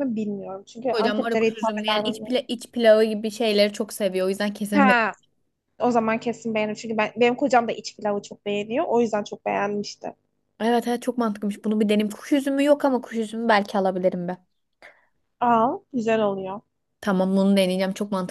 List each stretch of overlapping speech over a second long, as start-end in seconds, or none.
0.9-2.2